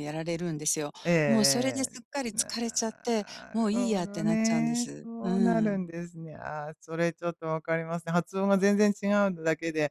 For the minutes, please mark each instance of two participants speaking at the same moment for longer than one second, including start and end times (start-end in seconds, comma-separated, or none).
1.9-5.8